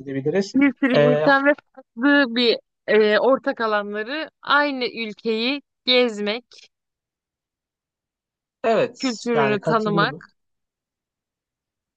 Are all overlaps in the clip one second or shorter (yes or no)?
no